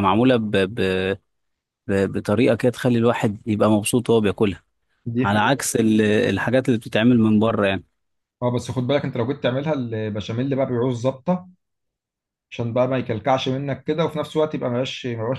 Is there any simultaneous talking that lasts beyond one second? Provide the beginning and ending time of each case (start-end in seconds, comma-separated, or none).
none